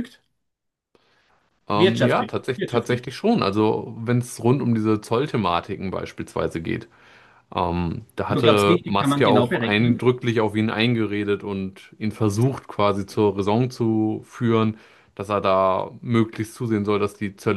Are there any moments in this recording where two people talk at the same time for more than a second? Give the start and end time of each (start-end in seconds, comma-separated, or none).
1.7-3.1, 8.3-10.1